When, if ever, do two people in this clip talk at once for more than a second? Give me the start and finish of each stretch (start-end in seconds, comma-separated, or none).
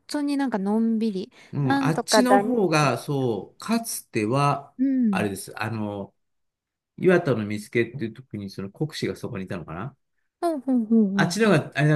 1.5-3.0